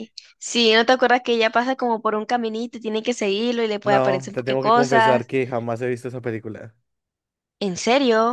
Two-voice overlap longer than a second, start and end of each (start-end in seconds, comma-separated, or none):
3.8-5.3